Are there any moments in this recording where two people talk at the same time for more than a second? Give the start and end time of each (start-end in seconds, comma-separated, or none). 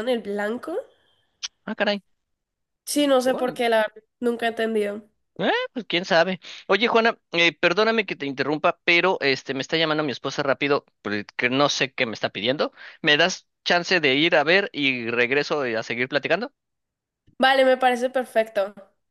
none